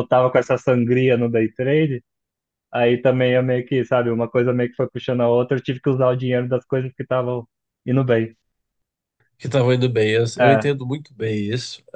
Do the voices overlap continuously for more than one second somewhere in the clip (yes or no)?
no